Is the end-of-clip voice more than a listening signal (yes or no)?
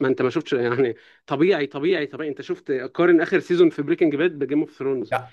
yes